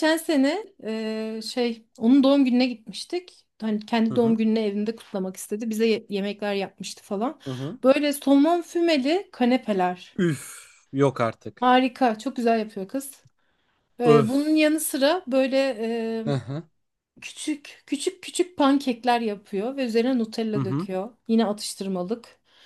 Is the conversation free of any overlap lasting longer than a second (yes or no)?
yes